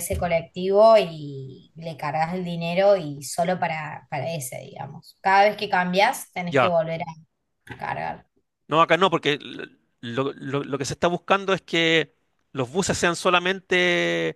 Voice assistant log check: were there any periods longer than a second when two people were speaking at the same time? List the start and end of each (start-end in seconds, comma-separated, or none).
none